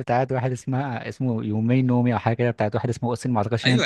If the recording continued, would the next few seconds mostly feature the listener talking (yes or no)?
yes